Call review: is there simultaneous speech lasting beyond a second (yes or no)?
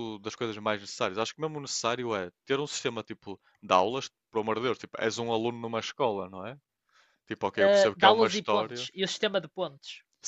yes